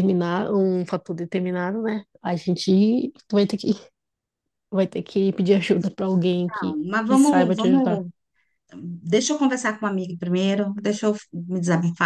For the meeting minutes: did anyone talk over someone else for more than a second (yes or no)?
yes